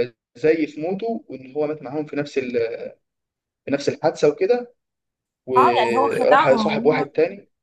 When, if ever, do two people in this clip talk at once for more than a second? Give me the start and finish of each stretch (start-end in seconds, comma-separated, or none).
5.6-7.1